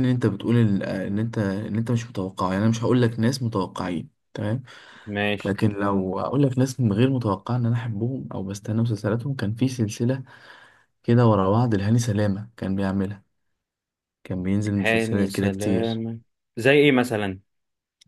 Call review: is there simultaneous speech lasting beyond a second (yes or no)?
yes